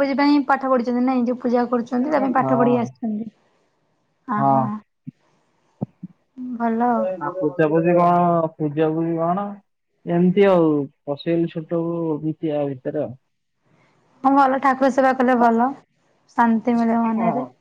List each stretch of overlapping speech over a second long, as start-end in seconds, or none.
none